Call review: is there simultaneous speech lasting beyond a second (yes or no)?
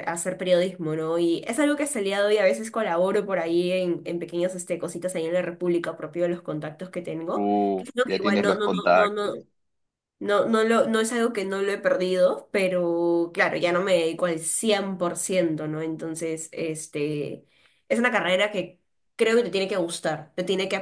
yes